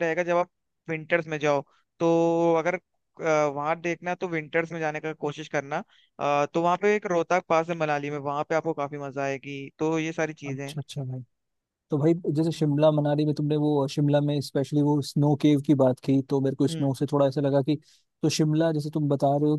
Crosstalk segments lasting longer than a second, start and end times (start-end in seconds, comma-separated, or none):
none